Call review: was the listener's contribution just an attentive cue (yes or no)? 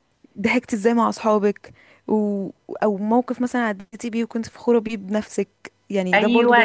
no